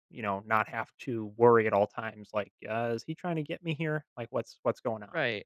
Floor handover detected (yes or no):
yes